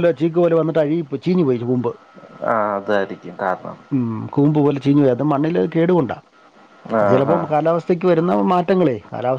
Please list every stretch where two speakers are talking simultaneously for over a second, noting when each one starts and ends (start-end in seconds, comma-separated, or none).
none